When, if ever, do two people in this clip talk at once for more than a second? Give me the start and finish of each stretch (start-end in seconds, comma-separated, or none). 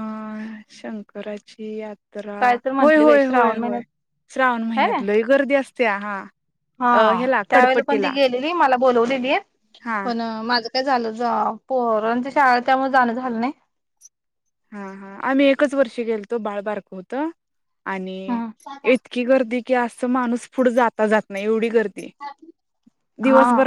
2.4-3.8